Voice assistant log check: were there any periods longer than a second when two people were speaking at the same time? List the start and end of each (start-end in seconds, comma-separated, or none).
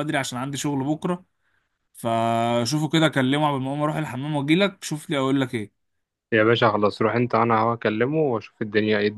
none